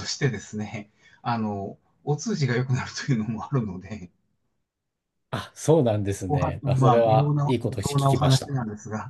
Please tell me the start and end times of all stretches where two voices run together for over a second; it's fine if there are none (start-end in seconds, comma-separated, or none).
6.3-8.5